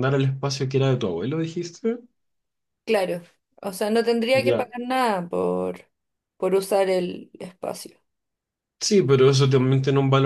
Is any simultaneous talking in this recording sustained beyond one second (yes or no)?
no